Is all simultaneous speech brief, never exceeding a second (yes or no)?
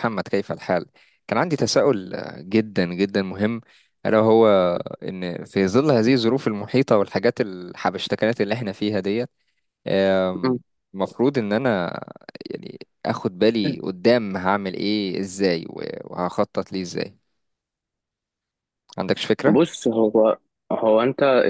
yes